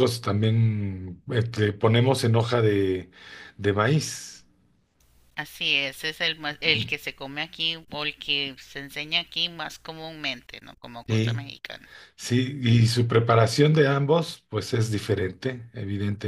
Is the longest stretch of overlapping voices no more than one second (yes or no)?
yes